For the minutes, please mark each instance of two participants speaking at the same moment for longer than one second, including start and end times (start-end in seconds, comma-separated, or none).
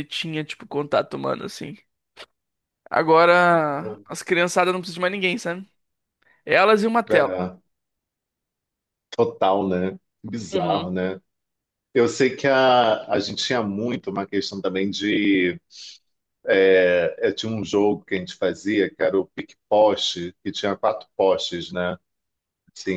none